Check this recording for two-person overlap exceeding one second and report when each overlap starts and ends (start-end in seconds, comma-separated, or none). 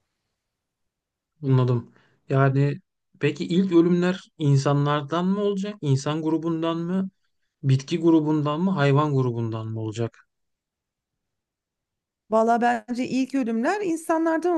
none